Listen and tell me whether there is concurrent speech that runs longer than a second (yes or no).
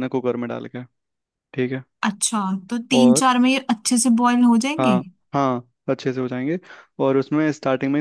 no